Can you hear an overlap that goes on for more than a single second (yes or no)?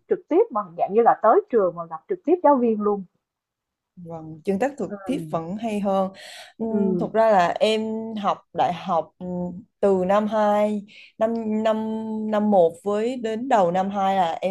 no